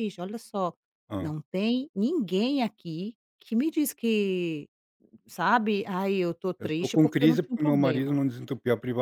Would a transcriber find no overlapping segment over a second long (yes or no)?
no